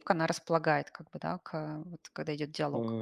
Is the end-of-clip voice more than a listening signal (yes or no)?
yes